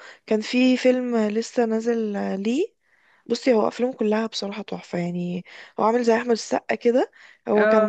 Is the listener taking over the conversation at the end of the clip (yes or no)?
no